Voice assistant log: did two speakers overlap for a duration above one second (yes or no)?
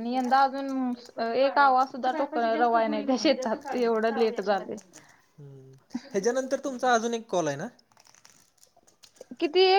no